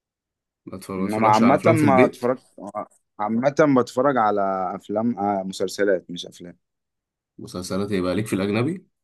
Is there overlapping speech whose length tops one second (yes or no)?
yes